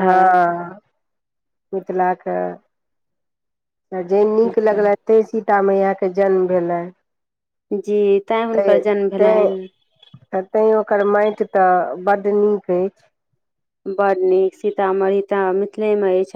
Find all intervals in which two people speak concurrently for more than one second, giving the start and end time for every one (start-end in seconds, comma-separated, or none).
none